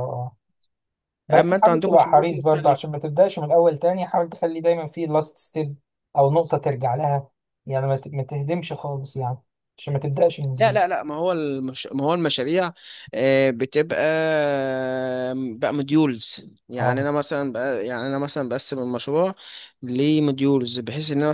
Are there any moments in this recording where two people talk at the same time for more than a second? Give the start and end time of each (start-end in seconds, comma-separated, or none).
1.3-2.8